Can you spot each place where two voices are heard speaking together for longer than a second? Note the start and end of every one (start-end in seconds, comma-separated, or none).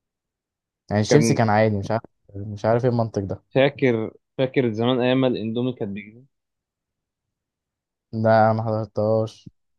none